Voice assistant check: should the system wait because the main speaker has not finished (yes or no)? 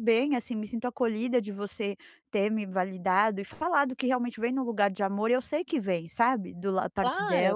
no